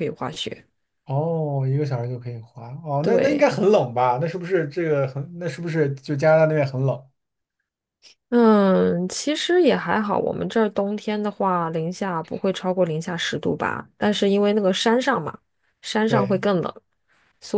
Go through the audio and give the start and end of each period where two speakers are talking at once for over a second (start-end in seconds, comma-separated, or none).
none